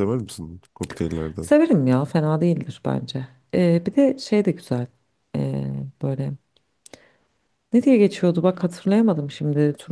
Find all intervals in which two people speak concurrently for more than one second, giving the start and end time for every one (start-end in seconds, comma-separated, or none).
none